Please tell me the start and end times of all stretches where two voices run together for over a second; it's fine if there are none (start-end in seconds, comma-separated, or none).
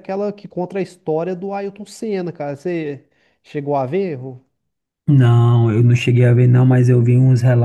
none